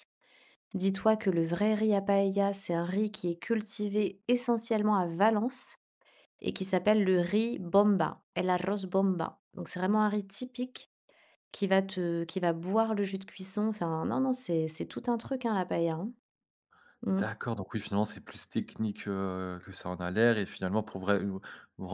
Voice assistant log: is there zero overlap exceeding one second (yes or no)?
yes